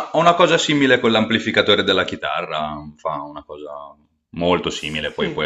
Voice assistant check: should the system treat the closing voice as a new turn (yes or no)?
yes